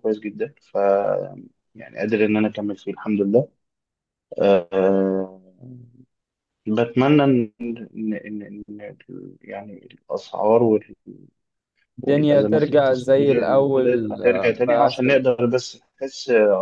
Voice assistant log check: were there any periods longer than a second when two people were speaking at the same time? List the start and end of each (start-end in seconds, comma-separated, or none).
12.0-15.1